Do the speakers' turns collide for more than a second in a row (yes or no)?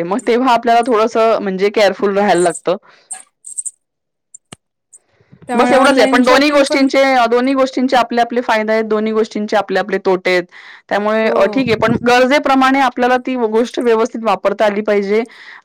yes